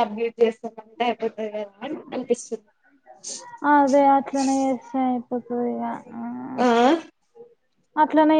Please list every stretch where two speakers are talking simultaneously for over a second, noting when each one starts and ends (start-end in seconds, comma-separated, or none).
none